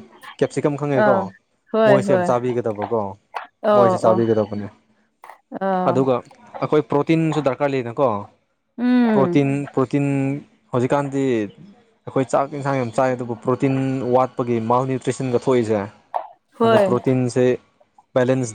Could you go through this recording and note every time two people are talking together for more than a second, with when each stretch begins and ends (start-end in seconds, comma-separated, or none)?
none